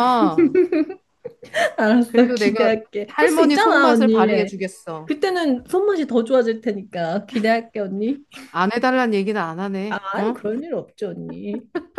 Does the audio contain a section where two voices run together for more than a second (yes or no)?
yes